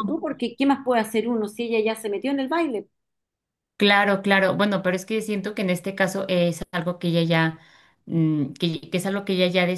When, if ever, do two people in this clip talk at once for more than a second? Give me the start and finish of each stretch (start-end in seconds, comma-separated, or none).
none